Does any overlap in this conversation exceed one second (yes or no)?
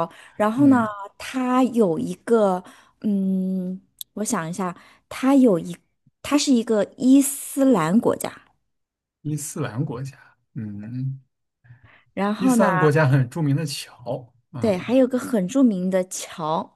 no